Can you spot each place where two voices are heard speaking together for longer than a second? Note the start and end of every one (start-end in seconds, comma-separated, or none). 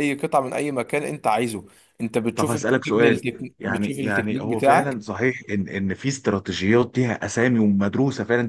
2.3-5.0